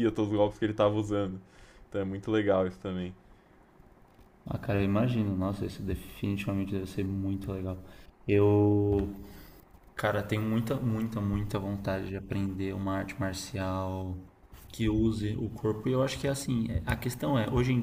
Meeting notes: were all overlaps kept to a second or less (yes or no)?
yes